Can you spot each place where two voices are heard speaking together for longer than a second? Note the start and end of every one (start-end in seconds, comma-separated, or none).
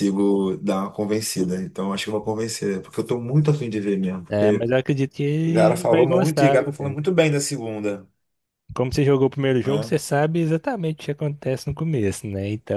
5.4-7.0